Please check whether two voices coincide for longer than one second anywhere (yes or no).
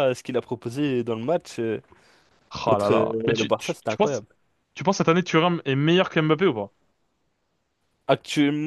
yes